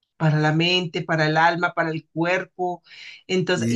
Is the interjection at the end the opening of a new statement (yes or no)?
no